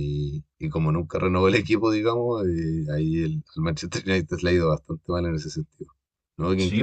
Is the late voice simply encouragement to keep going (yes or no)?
no